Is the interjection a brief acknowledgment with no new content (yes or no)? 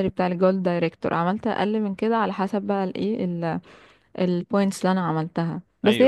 yes